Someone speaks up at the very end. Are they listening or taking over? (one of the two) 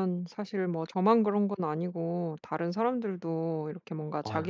listening